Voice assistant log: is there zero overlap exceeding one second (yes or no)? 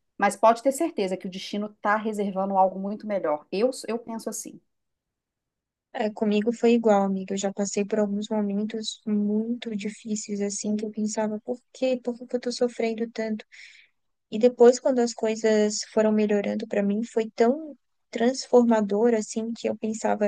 yes